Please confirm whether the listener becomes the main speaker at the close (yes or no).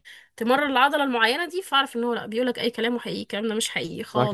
yes